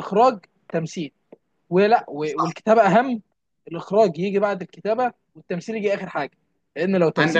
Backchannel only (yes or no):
yes